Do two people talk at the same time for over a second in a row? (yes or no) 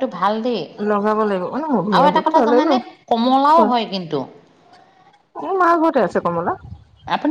yes